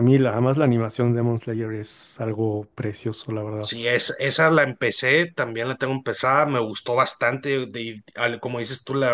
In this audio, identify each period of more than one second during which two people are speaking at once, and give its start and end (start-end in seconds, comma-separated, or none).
none